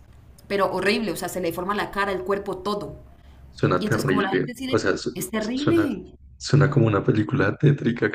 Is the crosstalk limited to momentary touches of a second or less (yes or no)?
no